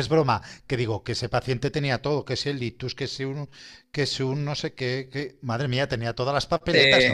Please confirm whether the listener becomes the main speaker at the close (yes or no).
yes